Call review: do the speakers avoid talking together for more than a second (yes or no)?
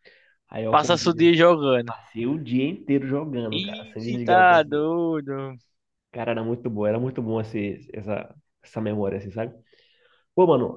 no